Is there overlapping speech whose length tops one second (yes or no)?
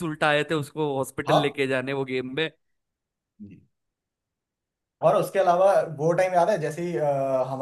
no